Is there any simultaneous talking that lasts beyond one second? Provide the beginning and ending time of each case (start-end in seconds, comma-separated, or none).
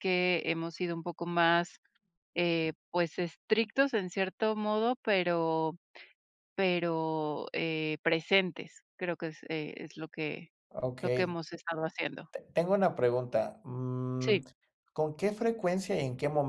none